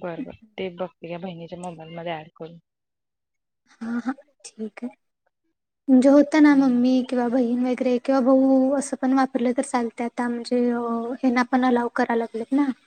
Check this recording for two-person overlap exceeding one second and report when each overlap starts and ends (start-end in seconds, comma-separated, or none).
none